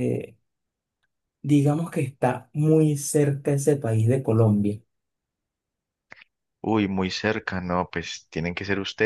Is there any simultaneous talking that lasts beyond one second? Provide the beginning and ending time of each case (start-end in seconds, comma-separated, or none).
none